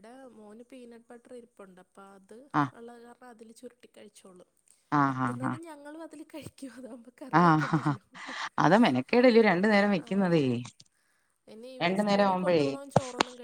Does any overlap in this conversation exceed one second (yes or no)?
no